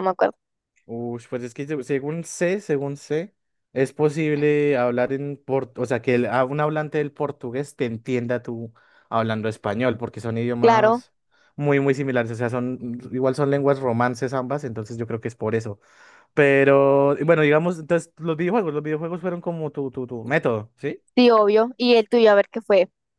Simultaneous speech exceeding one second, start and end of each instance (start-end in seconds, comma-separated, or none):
none